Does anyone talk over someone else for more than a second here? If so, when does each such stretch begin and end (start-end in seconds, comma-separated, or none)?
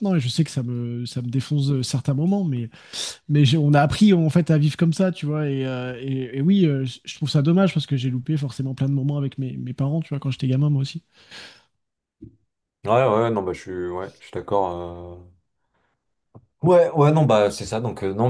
none